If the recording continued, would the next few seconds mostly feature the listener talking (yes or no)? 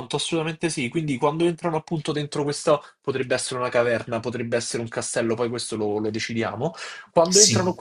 no